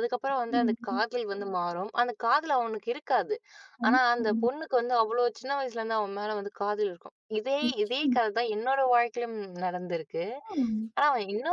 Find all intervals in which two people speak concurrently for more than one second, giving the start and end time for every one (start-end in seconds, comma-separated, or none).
none